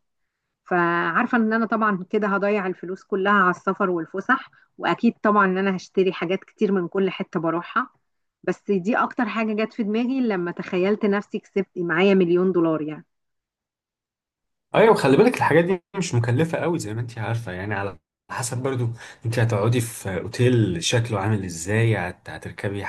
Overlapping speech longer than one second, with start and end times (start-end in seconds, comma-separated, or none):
none